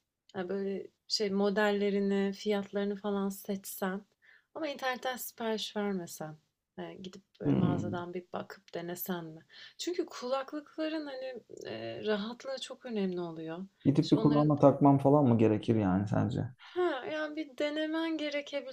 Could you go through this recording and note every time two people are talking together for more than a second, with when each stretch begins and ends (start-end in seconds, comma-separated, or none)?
none